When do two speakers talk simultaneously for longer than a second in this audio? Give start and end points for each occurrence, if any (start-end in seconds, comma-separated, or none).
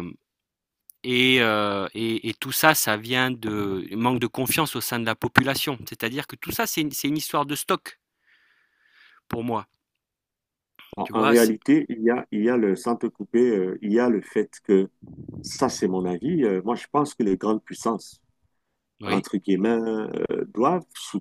none